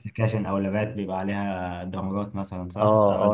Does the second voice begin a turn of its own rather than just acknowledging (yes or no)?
yes